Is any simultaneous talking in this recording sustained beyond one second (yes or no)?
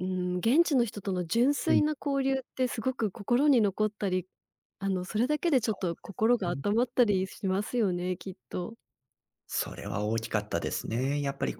no